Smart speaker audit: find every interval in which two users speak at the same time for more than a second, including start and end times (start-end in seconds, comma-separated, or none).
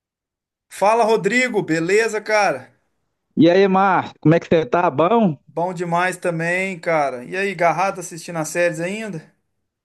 none